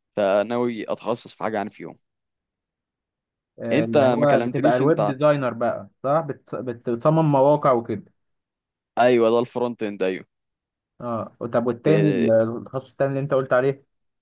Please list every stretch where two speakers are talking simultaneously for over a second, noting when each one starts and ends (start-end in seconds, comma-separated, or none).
3.7-5.2